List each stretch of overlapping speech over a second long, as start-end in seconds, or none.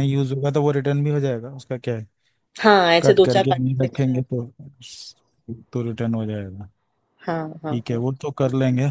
3.0-4.2